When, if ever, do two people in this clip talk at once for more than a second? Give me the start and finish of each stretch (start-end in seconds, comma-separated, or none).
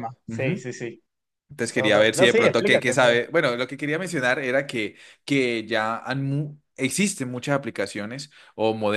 1.6-3.2